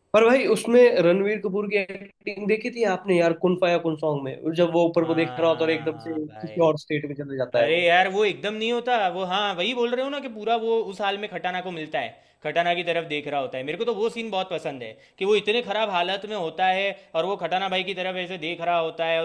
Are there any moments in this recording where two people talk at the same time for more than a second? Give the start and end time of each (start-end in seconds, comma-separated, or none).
5.0-6.7